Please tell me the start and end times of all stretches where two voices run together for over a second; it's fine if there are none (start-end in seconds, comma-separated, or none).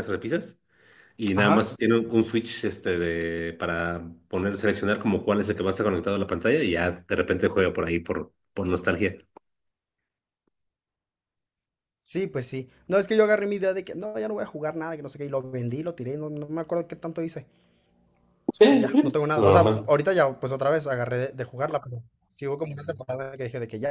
18.7-19.9